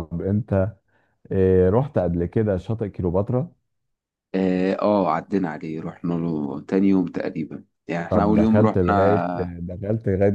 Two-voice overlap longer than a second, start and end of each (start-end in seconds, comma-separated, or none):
8.1-9.5